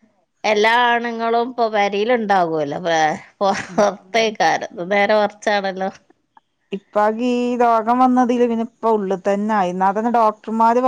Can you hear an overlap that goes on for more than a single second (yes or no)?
no